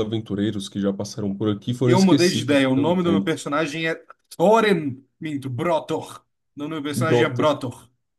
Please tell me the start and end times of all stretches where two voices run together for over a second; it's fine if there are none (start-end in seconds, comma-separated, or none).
1.8-3.3